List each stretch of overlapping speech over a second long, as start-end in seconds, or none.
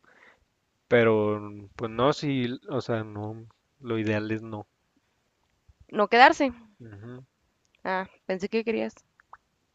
none